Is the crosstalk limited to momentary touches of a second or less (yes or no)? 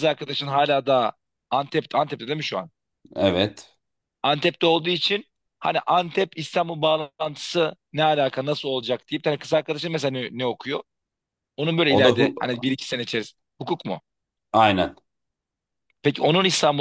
yes